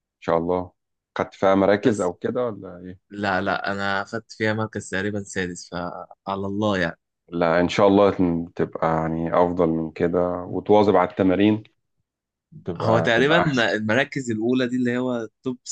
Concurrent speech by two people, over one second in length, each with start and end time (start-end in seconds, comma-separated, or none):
none